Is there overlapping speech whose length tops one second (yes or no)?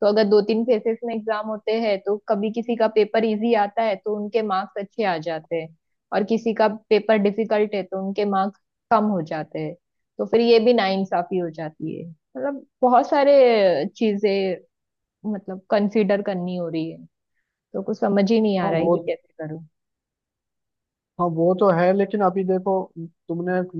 no